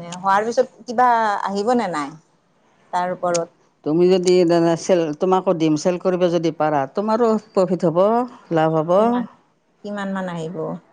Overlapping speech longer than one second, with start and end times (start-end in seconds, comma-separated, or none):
none